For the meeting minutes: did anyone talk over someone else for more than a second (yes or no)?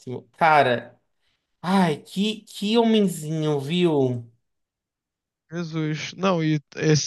no